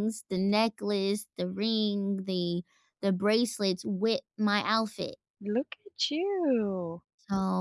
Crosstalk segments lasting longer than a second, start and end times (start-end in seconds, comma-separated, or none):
none